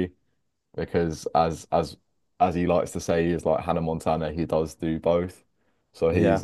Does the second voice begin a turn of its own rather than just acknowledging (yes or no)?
no